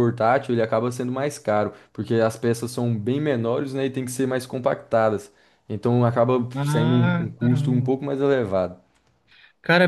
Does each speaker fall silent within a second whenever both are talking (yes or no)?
no